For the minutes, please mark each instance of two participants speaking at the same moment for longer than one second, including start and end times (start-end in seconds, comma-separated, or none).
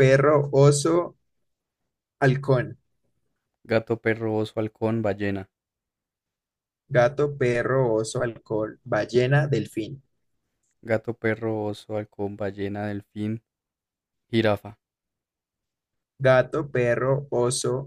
none